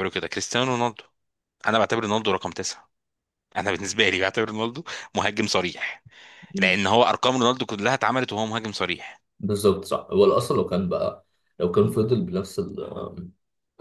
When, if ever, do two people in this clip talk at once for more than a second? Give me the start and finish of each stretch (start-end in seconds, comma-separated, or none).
none